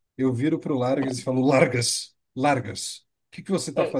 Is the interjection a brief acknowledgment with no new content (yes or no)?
no